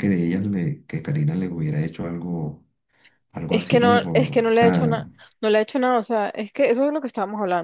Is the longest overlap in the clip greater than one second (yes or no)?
yes